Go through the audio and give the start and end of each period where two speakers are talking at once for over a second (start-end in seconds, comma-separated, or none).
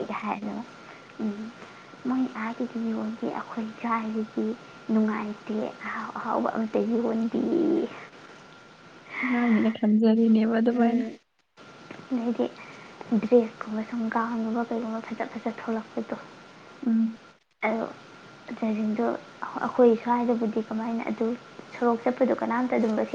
none